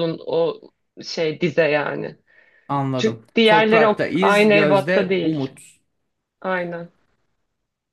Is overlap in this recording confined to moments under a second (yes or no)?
no